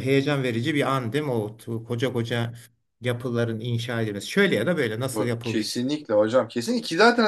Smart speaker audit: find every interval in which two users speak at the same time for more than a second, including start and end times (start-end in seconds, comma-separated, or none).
none